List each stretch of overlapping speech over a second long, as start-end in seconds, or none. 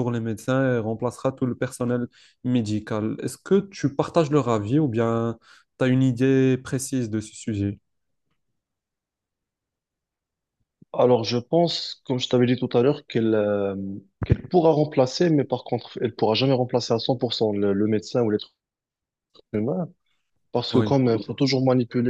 none